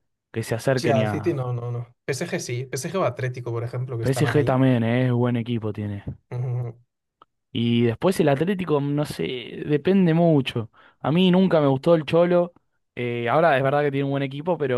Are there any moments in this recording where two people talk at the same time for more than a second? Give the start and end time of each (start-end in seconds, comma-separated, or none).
none